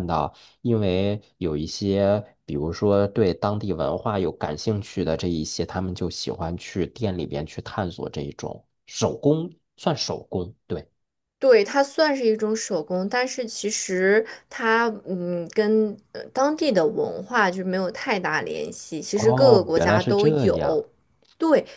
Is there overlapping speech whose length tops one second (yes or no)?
yes